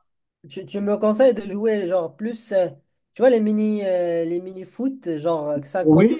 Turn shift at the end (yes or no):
yes